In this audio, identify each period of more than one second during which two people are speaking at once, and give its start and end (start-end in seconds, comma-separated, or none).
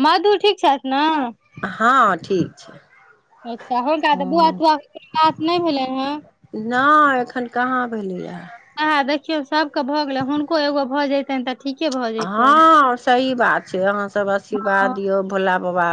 none